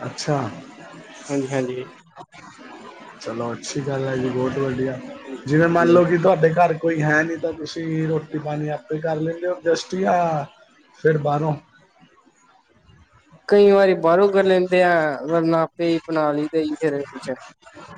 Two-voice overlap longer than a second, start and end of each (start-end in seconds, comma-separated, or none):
none